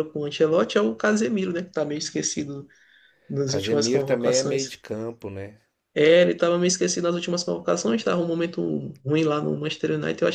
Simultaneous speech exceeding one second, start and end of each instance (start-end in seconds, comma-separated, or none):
3.5-4.8